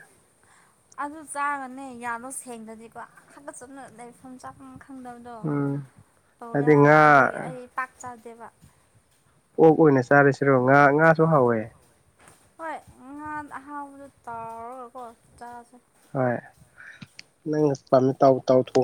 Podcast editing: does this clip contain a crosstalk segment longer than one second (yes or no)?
no